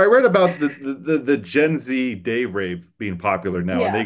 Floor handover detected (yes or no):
no